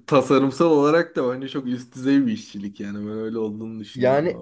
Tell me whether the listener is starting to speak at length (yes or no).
yes